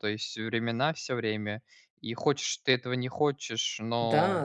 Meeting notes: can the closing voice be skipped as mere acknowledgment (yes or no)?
no